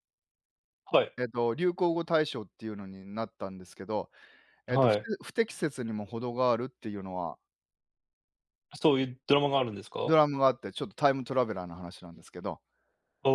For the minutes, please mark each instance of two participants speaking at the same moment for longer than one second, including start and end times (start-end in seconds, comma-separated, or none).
none